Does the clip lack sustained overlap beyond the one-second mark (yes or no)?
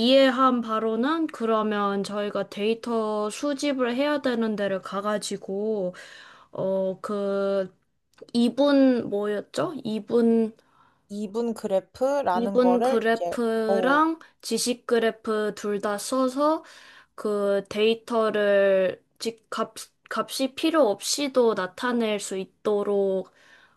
no